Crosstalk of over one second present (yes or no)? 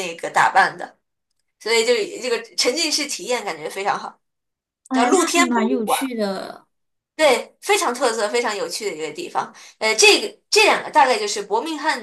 yes